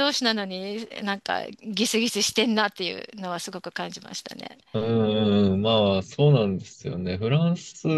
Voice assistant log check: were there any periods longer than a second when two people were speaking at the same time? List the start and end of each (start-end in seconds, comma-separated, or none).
none